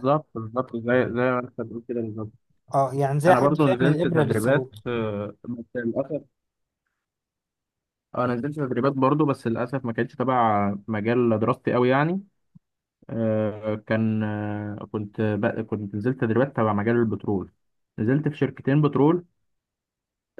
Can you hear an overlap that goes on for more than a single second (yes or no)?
yes